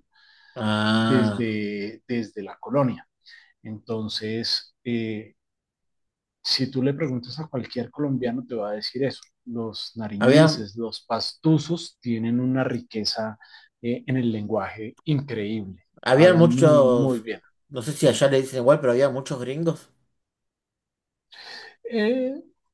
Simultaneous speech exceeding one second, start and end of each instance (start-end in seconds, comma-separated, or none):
16.0-17.3